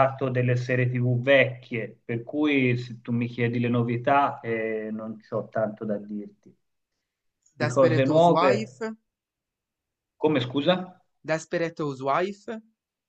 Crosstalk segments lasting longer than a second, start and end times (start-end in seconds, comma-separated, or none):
7.6-8.8